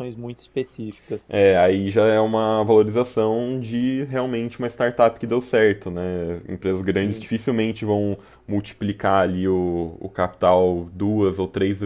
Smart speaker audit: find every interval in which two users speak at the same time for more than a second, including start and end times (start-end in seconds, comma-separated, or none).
none